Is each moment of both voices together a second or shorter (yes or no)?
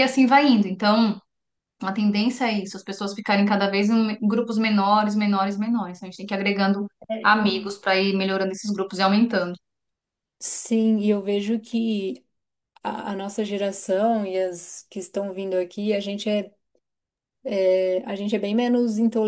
yes